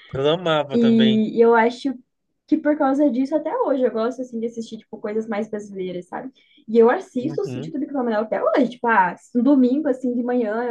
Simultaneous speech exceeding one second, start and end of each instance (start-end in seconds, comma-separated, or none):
none